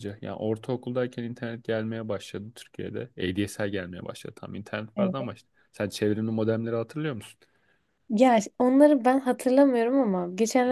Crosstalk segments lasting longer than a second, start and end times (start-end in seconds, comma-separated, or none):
none